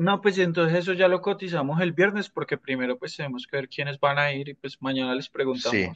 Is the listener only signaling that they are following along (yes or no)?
no